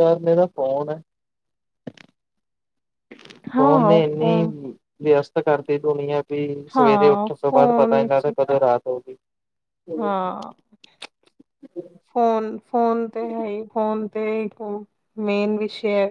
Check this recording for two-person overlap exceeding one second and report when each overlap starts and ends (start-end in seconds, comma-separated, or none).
6.8-8.3